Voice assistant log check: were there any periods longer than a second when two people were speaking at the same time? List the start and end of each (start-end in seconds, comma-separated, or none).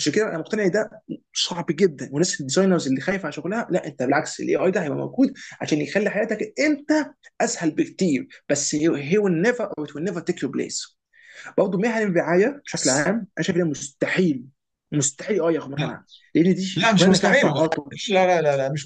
16.8-18.0